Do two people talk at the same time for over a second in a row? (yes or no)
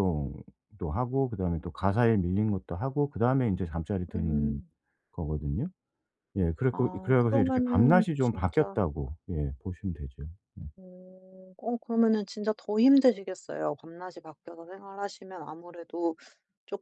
yes